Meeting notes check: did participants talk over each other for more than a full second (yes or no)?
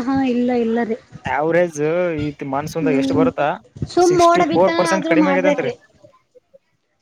yes